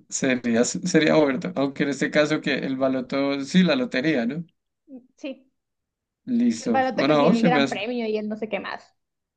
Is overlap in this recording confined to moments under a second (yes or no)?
no